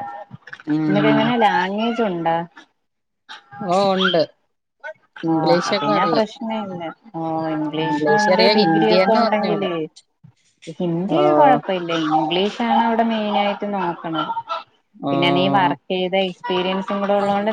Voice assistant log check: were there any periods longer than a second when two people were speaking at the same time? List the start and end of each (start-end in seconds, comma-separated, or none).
7.8-9.7